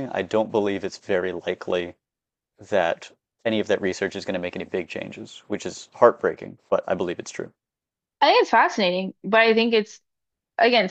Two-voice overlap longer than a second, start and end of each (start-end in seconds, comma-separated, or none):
none